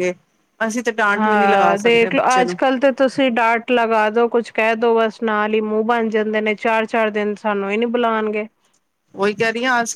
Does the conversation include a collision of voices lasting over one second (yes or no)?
yes